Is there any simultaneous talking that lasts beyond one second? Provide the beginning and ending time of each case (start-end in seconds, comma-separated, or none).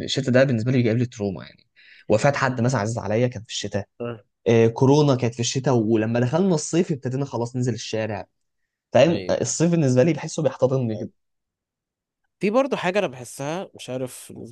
none